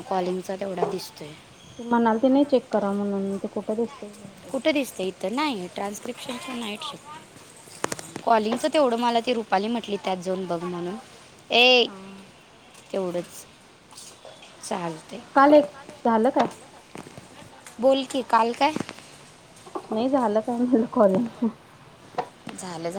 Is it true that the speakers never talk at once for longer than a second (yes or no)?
yes